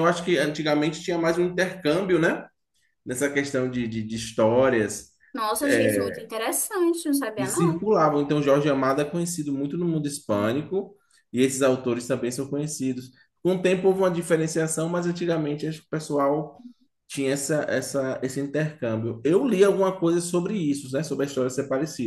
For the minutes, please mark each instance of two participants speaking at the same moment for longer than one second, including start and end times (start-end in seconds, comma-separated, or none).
none